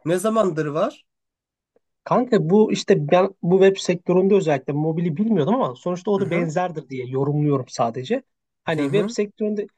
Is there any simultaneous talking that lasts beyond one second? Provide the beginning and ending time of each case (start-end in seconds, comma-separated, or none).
none